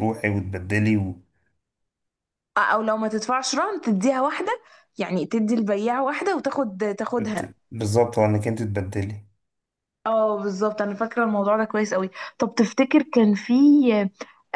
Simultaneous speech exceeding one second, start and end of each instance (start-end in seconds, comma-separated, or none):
none